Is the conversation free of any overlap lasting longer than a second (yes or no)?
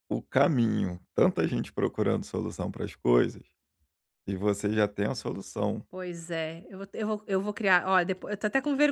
yes